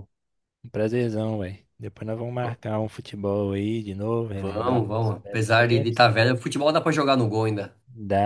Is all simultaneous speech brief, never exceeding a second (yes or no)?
no